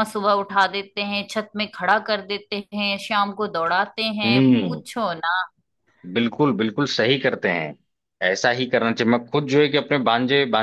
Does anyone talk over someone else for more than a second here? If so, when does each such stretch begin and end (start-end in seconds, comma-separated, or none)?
none